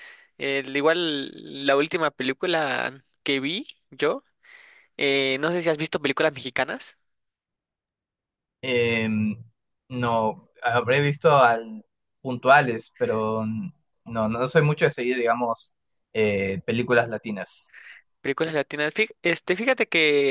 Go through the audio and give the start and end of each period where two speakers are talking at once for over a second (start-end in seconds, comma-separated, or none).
none